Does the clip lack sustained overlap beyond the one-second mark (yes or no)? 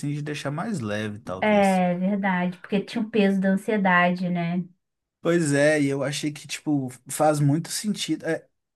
yes